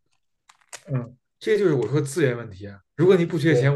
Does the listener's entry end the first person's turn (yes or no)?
no